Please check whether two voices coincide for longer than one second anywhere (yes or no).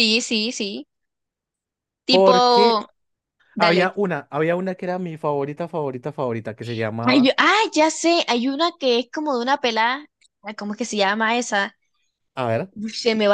no